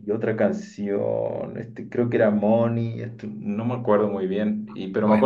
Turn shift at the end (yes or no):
no